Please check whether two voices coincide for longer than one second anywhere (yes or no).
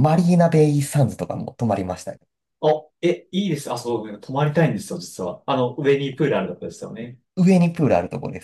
no